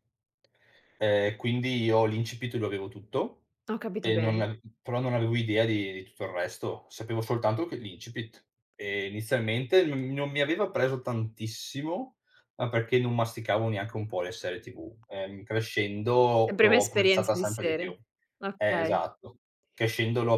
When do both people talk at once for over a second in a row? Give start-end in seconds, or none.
16.5-17.9